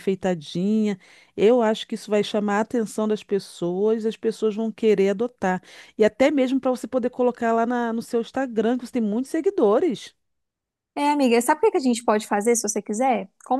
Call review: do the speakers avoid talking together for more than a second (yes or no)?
yes